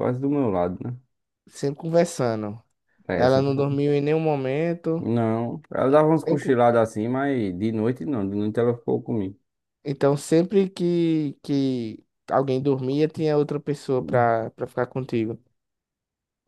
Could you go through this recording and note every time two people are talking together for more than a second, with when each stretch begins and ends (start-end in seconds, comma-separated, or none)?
none